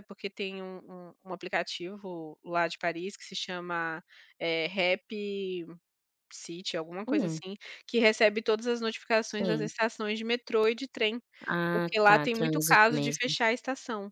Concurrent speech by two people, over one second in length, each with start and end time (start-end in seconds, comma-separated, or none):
11.7-13.4